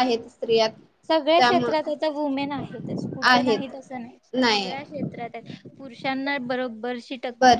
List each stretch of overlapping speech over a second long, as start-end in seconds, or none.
none